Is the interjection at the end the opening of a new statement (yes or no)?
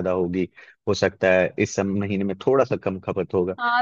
yes